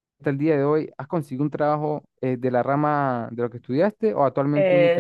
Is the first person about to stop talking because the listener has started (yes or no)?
yes